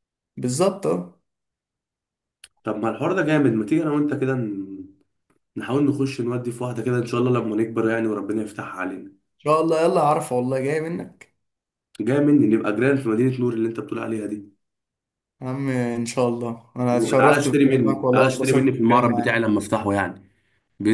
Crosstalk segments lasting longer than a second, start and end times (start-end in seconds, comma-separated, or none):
16.9-19.4